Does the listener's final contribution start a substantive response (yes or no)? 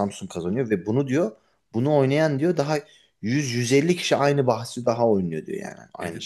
yes